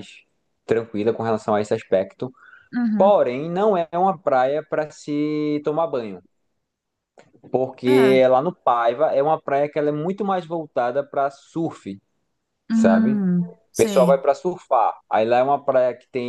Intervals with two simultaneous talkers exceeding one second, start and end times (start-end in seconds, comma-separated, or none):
12.7-14.2